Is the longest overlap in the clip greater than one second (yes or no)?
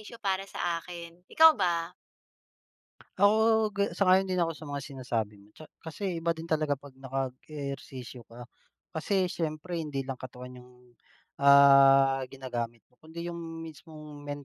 no